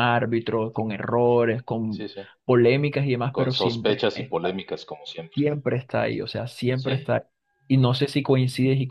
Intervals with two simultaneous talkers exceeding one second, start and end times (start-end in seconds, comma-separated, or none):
3.3-4.6